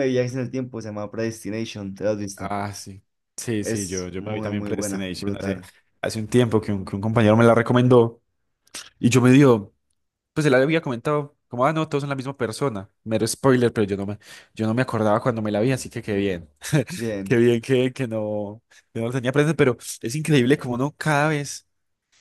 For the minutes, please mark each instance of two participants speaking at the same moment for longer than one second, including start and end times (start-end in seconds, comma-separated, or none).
3.6-5.6